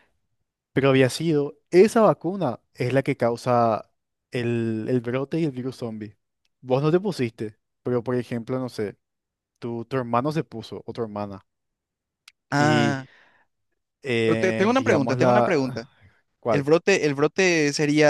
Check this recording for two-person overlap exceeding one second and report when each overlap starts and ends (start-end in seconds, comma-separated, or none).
14.2-15.6